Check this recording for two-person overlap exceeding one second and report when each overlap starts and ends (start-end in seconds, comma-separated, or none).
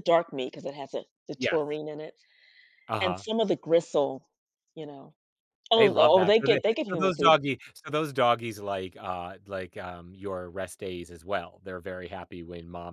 5.8-7.3